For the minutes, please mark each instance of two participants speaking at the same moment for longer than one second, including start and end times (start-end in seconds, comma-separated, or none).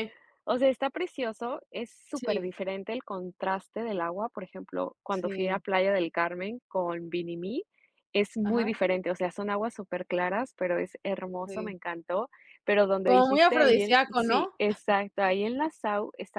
13.1-14.5